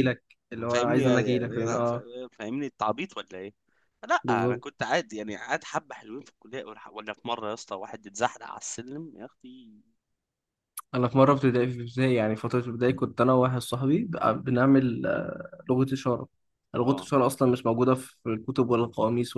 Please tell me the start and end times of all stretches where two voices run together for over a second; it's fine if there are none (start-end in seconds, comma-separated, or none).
0.7-2.0